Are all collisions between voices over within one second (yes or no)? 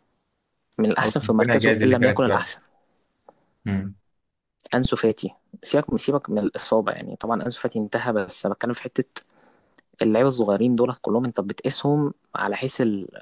no